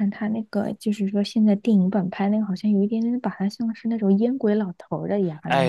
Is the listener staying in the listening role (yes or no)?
no